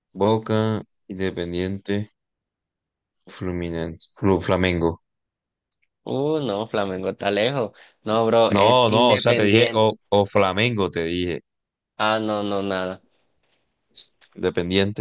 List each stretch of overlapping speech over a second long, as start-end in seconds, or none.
8.5-9.8